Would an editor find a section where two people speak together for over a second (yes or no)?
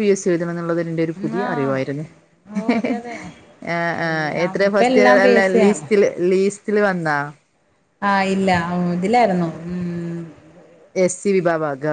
yes